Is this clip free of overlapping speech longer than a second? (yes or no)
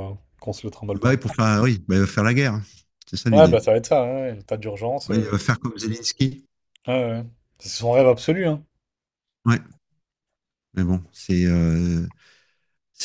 yes